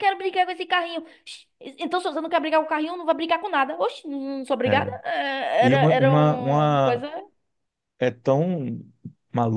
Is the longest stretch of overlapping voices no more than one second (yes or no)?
no